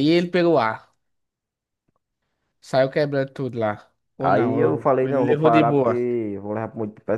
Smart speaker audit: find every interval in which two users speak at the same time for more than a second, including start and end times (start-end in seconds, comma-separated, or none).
4.2-6.0